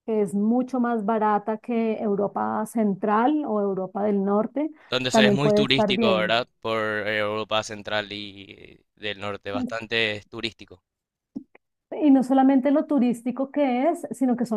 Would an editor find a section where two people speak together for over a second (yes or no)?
yes